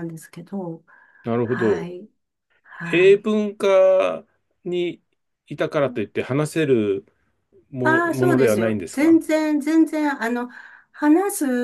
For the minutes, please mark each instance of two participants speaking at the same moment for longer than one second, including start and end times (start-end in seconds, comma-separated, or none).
7.8-9.2